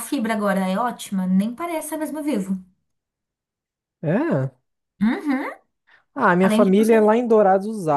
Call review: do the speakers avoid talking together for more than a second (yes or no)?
yes